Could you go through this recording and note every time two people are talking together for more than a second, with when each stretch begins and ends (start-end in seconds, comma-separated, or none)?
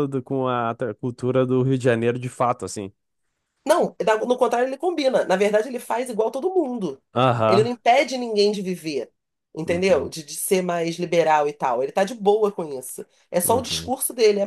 none